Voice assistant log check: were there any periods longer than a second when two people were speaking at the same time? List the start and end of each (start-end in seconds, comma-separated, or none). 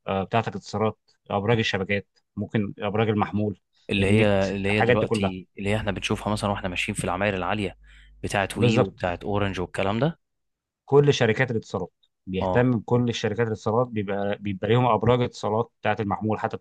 4.0-5.3